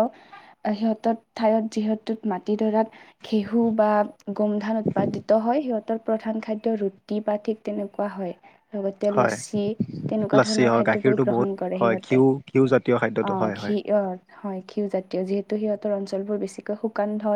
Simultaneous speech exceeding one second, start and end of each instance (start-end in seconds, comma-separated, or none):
10.4-13.8